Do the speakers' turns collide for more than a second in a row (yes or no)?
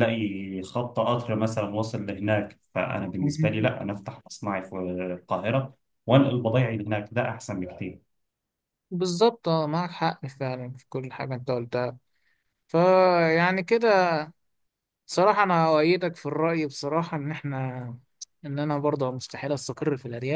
no